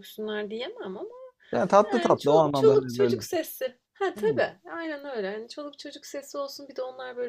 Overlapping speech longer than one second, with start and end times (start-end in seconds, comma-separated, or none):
1.9-3.2